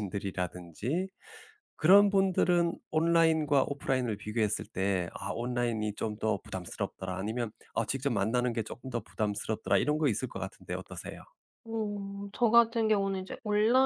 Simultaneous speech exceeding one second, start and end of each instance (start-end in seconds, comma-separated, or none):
none